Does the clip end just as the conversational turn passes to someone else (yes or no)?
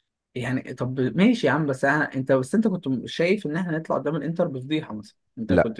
yes